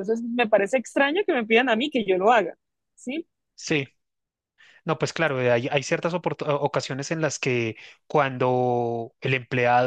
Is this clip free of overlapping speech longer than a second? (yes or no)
yes